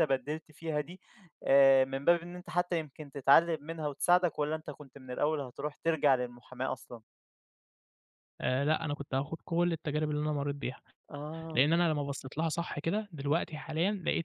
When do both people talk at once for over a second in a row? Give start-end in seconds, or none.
none